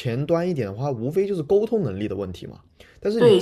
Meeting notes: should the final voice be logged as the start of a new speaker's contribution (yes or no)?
yes